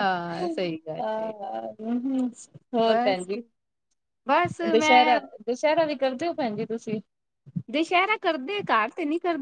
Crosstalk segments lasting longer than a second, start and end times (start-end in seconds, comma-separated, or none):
none